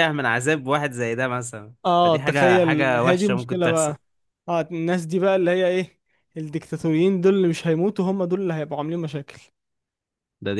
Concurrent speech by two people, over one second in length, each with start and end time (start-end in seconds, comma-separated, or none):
1.9-3.9